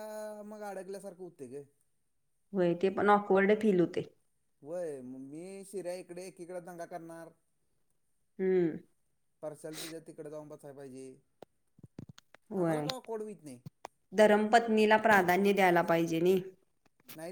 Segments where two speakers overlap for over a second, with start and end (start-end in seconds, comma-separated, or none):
none